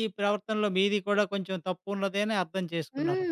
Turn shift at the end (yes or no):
yes